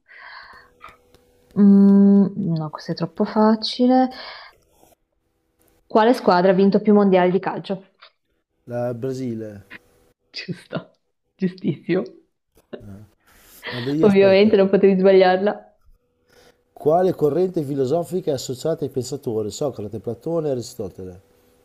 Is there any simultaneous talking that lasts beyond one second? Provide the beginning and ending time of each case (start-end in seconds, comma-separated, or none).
none